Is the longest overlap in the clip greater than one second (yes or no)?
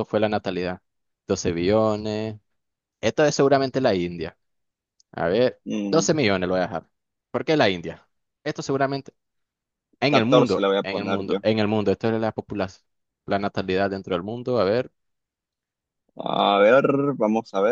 yes